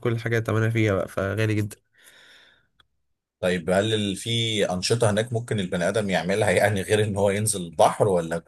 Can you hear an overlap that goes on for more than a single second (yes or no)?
no